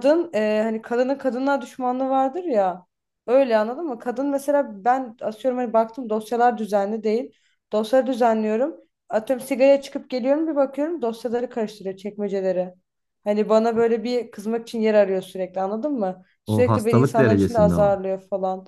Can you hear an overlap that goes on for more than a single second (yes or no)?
yes